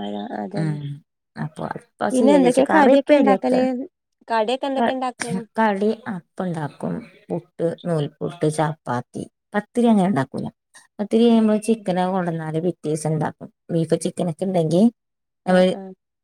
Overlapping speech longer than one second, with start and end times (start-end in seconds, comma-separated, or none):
2.2-3.6